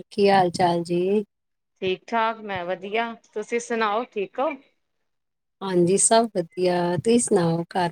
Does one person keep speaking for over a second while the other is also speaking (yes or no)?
no